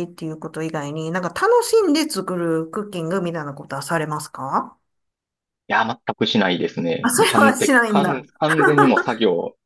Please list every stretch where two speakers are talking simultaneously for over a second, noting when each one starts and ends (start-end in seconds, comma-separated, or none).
7.0-8.3